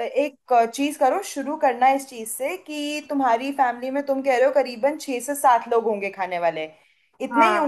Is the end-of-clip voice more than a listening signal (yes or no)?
yes